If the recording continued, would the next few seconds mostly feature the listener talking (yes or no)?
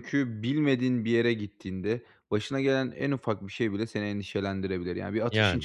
no